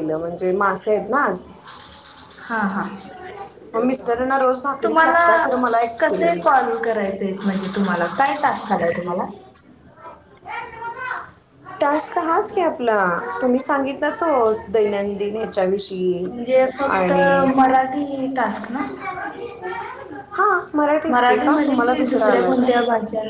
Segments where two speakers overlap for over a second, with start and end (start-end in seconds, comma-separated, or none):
none